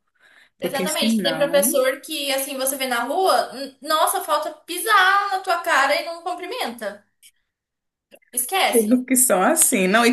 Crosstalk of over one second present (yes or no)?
yes